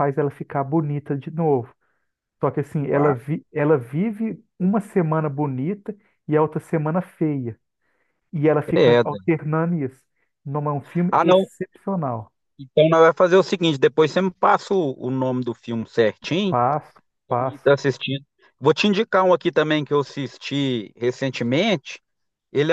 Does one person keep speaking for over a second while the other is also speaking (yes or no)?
no